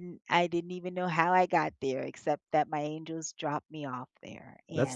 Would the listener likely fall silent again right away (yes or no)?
no